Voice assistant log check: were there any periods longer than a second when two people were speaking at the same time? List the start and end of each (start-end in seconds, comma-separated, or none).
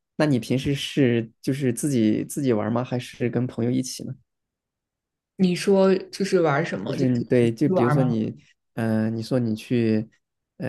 6.8-8.2